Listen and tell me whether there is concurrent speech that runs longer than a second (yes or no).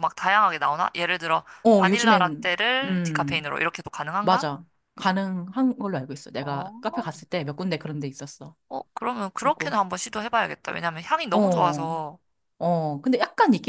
yes